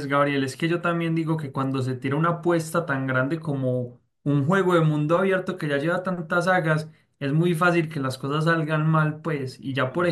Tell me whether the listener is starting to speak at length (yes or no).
no